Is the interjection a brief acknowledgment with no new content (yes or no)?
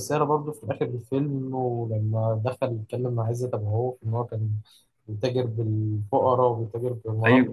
yes